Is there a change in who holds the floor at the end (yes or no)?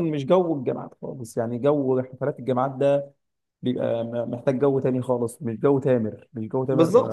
yes